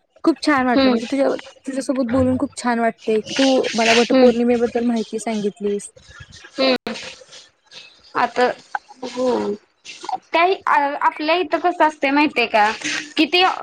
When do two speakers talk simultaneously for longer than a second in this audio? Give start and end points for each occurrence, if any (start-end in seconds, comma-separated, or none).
none